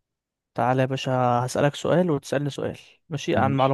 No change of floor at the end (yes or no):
yes